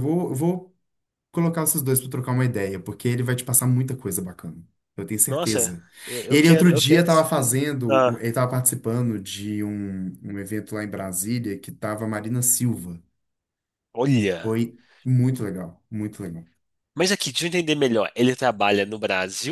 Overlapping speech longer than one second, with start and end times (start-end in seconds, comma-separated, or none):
6.3-8.2